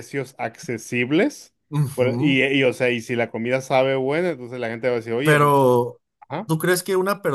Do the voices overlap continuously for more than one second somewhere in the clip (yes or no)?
no